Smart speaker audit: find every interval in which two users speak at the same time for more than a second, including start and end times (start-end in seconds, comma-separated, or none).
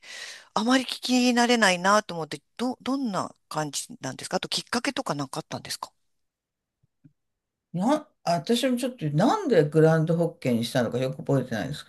none